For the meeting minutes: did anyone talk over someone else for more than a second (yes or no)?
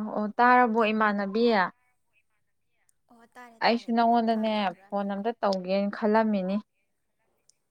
yes